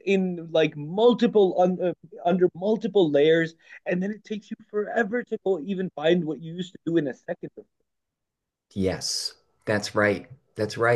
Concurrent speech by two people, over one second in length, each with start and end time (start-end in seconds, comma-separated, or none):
none